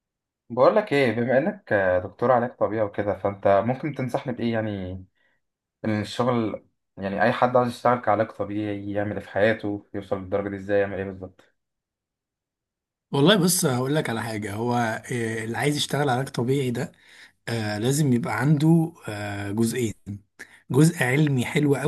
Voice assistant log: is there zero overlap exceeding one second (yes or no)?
yes